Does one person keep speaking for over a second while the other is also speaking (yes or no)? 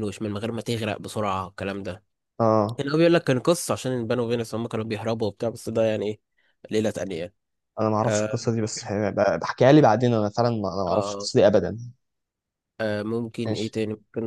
no